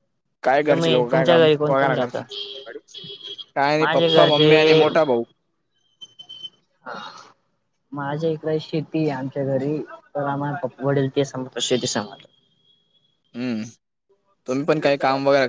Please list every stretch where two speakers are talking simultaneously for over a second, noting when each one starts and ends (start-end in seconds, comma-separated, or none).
0.7-2.2